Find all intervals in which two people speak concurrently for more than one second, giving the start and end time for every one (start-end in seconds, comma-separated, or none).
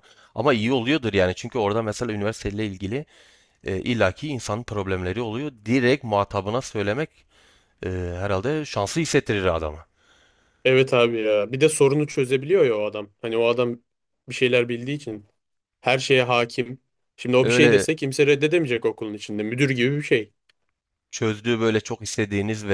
none